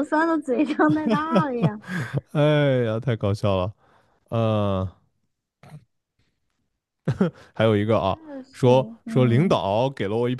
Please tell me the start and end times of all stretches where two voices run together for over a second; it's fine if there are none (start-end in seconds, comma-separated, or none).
8.0-9.6